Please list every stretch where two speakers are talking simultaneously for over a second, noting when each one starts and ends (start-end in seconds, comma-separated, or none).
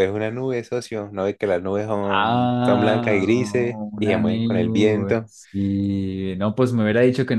2.0-5.3